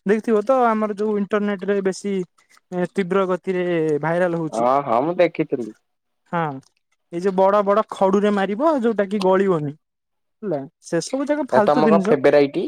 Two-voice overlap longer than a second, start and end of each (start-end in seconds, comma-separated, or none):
none